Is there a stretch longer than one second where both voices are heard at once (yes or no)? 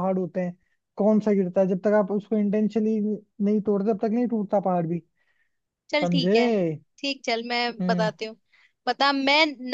no